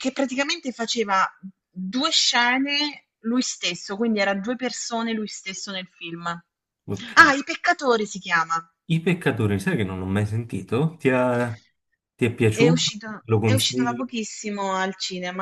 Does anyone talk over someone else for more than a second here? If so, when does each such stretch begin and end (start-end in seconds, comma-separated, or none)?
12.5-14.2